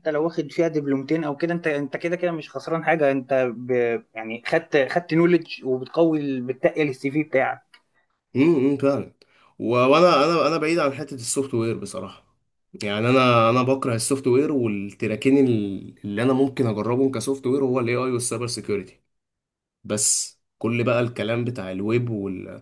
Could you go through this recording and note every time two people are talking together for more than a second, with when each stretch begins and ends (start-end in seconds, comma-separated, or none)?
none